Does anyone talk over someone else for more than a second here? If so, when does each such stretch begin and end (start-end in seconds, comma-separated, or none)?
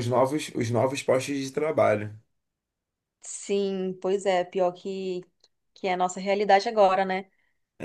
none